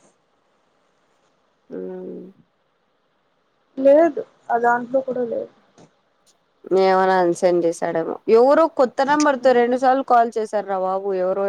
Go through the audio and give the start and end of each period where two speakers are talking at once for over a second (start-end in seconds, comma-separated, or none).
none